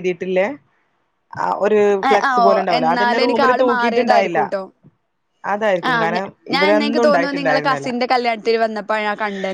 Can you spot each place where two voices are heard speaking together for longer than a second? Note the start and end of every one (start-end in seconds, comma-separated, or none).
2.1-4.4, 5.9-7.9